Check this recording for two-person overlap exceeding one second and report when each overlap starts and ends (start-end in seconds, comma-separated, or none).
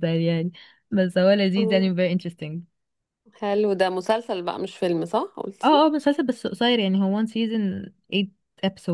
none